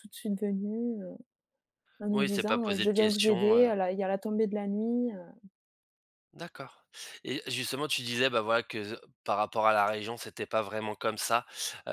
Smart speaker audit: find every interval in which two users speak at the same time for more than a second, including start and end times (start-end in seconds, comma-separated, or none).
2.1-3.7